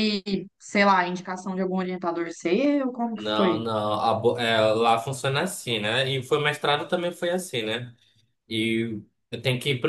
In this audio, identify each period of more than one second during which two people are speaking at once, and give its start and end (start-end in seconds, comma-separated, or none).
none